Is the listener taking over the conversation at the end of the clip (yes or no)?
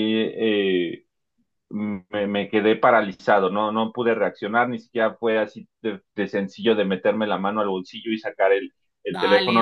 yes